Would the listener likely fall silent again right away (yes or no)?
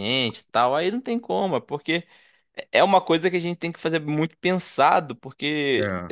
yes